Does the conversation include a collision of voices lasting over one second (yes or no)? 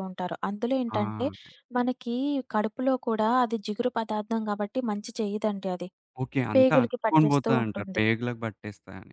yes